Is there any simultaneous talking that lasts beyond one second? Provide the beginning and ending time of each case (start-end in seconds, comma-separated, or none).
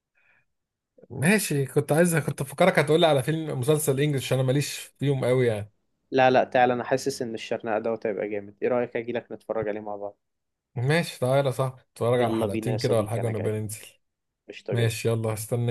12.2-13.6